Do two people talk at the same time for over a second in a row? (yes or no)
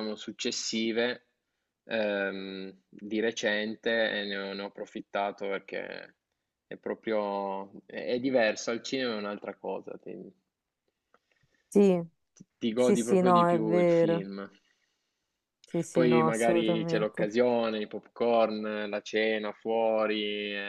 yes